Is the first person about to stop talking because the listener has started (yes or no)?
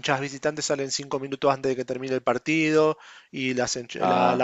no